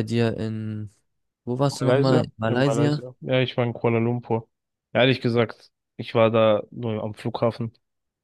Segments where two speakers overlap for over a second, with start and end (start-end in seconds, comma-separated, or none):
1.8-3.0